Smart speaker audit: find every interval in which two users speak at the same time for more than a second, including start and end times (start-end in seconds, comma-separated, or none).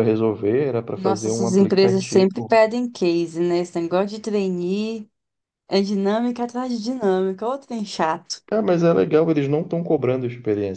0.9-2.5